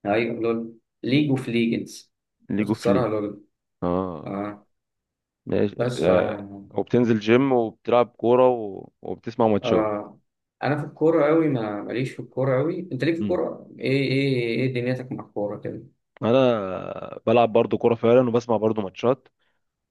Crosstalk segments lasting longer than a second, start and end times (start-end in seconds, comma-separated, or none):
none